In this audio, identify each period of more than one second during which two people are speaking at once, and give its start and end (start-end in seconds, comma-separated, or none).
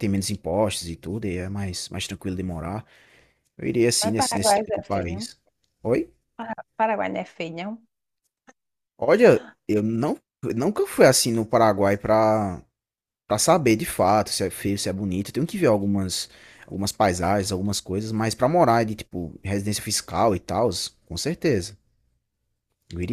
4.0-5.3